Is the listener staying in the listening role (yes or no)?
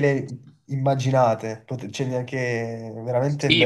no